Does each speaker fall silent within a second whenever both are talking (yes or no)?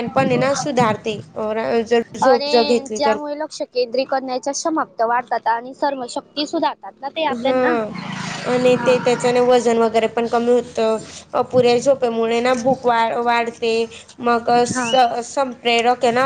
yes